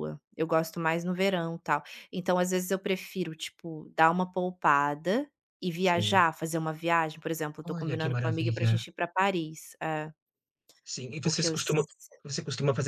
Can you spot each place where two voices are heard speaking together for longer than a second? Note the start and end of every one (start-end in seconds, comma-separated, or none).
7.6-8.8